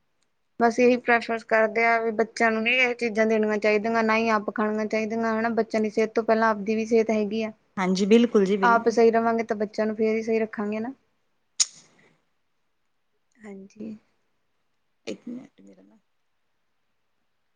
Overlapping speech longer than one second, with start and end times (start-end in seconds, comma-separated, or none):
none